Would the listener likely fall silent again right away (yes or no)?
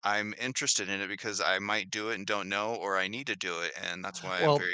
no